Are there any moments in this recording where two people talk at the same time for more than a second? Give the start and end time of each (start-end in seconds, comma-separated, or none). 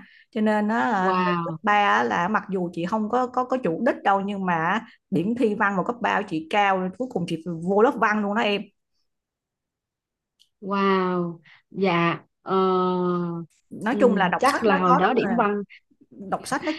13.9-15.4